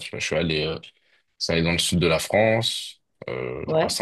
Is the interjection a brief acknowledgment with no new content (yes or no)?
yes